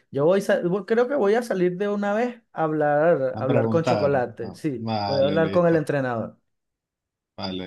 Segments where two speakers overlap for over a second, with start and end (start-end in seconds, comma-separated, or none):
3.4-5.8